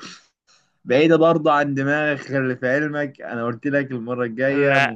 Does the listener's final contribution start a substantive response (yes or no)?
no